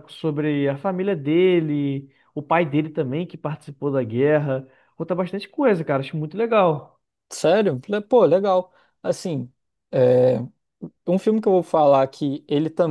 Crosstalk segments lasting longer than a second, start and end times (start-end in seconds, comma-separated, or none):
none